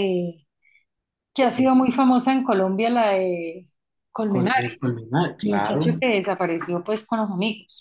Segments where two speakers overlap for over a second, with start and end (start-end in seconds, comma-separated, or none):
4.3-5.8